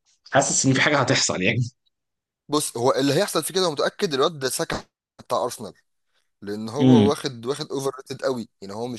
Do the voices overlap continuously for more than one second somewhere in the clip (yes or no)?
no